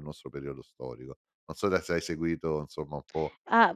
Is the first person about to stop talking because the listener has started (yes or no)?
yes